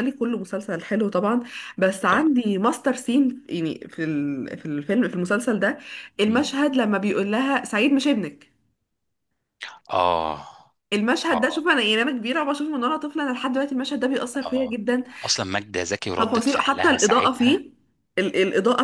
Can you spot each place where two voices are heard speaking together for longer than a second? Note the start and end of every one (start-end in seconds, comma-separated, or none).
16.2-17.6